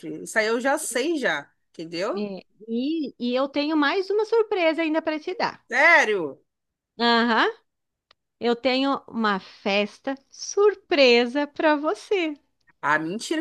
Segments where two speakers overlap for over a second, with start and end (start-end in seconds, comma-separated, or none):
none